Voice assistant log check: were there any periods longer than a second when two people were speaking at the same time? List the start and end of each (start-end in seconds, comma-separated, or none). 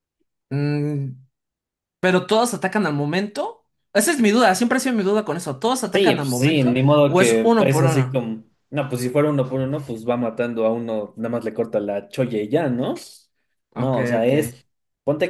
5.9-8.2